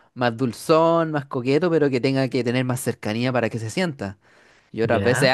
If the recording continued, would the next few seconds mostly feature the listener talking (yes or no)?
no